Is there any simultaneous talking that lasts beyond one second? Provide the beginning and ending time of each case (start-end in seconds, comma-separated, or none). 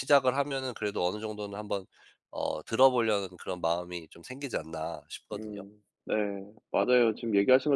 none